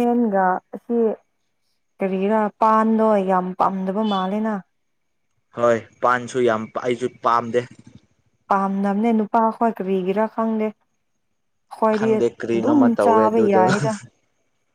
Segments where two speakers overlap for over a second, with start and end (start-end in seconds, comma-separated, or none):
12.0-13.6